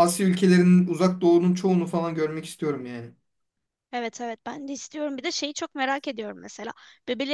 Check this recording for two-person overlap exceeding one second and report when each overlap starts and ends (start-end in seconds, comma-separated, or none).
none